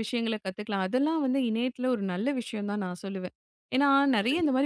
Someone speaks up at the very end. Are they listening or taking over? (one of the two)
listening